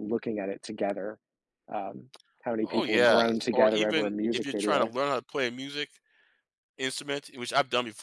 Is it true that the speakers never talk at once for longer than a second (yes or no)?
no